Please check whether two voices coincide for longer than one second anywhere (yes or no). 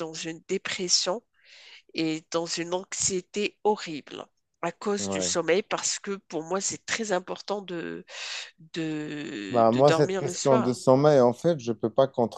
yes